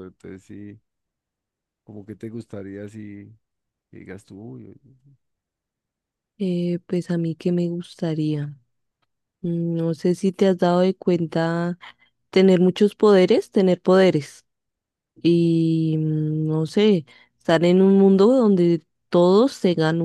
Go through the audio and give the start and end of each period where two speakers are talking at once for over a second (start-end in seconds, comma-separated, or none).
none